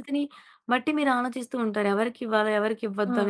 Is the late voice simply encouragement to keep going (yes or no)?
no